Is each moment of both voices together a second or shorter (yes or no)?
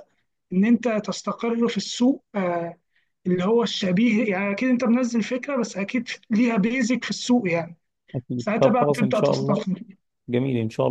no